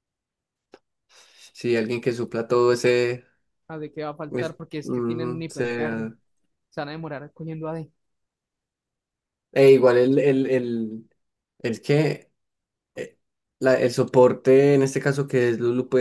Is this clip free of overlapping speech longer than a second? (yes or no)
no